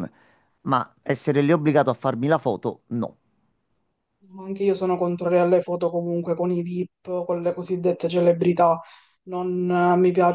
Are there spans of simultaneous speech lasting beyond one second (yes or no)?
no